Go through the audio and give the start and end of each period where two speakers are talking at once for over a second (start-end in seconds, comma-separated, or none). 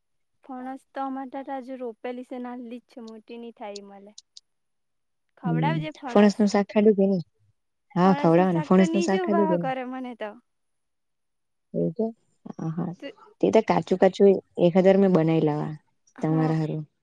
8.0-9.7